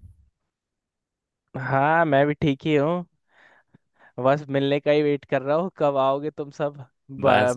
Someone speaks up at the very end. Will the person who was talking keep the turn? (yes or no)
no